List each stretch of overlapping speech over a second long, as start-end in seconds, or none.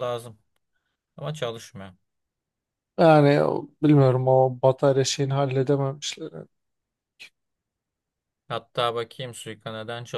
none